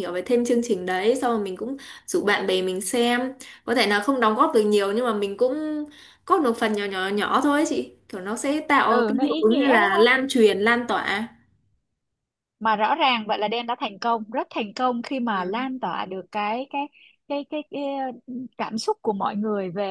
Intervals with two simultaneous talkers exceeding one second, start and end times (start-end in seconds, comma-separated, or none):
8.9-10.1